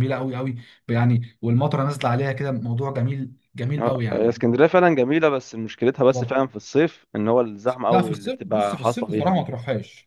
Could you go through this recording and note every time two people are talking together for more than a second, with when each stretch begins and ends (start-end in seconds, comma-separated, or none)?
7.9-9.5